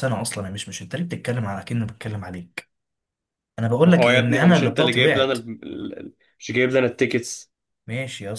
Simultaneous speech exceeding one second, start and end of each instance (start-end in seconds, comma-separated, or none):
3.8-5.4